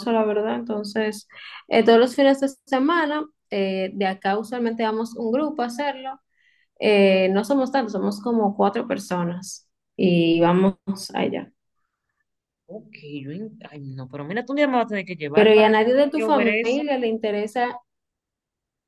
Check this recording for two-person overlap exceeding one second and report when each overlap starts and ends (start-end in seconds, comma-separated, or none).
15.3-16.8